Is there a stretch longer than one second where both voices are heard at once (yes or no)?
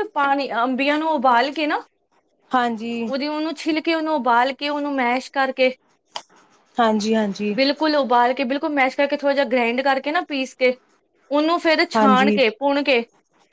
no